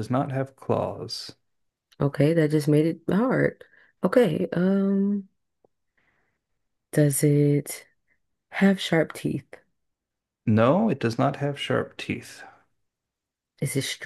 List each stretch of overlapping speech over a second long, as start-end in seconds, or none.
none